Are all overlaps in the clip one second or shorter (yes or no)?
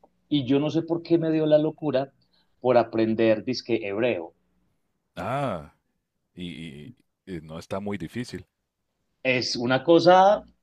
yes